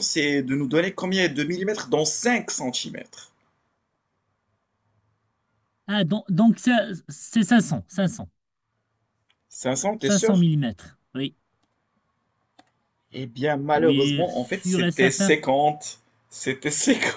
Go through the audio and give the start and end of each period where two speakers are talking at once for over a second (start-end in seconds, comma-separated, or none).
13.7-15.4